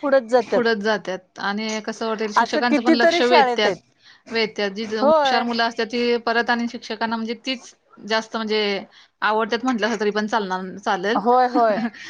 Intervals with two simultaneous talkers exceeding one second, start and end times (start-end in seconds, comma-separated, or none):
2.4-3.8